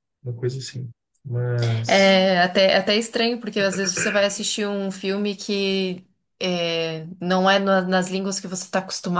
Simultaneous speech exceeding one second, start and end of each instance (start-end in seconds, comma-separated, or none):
none